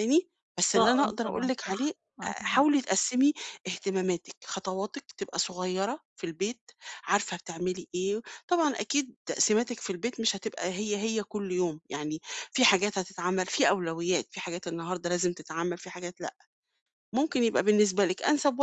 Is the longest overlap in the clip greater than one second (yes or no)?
yes